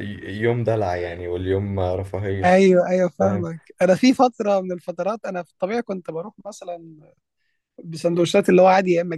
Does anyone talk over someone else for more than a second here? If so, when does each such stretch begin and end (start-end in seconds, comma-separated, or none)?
none